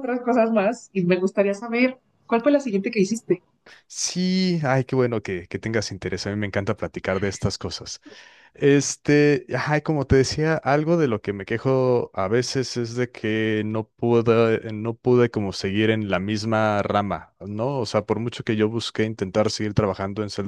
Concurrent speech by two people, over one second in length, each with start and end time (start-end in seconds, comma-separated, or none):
none